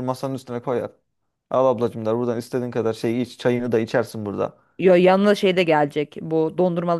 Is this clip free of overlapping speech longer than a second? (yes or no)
yes